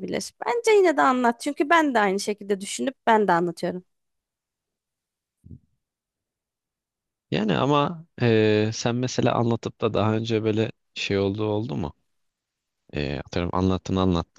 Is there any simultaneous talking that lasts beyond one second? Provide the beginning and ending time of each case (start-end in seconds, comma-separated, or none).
none